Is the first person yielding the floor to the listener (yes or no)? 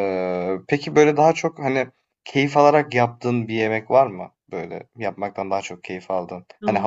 no